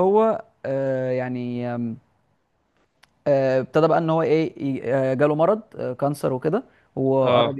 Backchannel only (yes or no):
yes